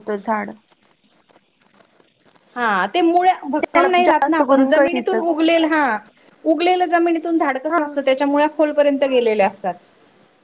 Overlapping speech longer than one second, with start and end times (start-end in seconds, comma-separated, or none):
3.7-5.4